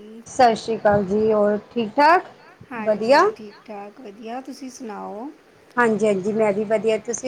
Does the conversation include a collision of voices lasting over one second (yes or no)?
no